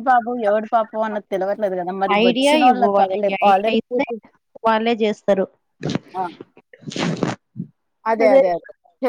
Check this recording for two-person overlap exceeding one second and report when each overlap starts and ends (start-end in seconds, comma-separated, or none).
2.3-4.1